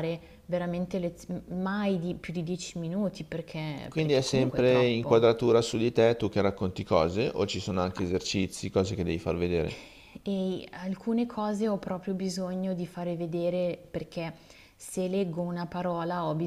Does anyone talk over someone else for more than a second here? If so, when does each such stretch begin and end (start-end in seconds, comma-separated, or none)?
3.9-5.3